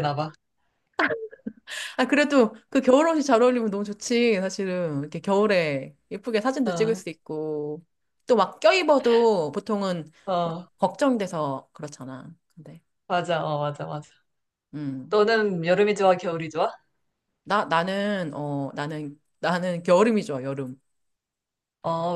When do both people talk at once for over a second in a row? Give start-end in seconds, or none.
none